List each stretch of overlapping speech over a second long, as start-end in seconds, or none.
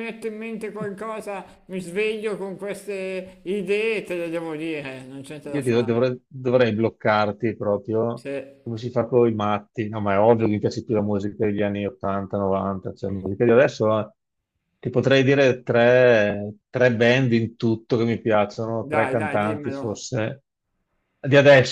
18.8-20.0